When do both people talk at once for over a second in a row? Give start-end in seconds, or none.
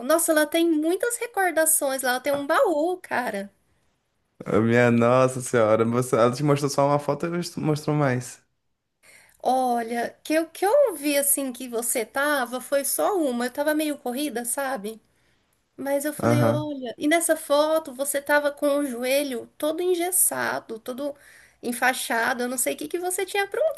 none